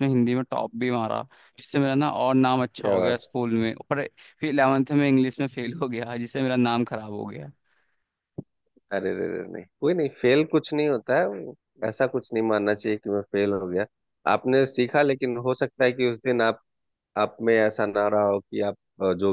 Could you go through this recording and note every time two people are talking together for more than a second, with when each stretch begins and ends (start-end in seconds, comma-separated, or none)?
none